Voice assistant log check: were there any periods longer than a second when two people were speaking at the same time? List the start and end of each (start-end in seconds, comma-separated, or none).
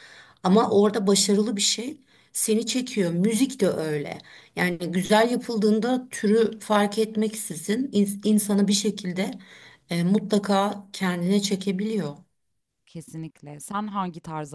none